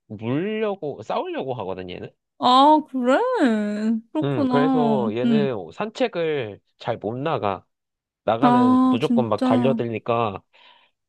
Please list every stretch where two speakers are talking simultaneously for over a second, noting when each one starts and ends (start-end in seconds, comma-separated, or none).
4.2-5.5, 8.4-9.8